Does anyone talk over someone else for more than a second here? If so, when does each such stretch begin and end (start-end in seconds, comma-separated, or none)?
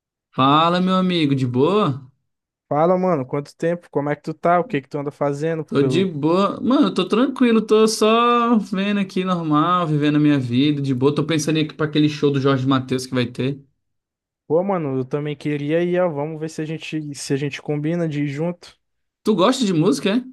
none